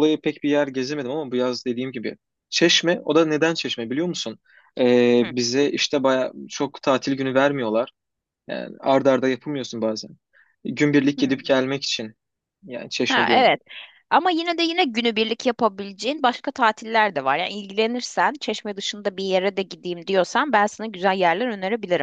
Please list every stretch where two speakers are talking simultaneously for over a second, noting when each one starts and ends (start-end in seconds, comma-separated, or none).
none